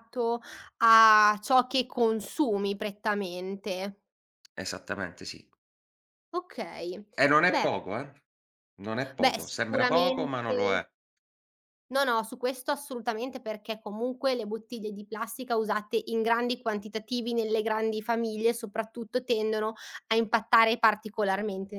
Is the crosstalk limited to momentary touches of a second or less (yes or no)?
no